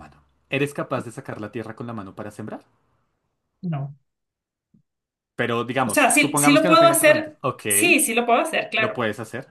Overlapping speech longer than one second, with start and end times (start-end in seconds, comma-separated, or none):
5.8-7.6